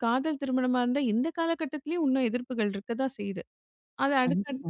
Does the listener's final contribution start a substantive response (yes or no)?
no